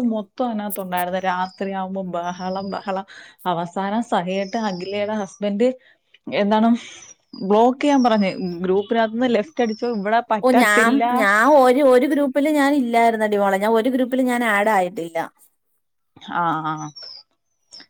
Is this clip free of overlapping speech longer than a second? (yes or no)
yes